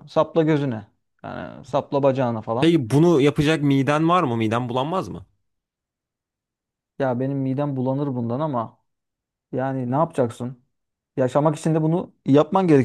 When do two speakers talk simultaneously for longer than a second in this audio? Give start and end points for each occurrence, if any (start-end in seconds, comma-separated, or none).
none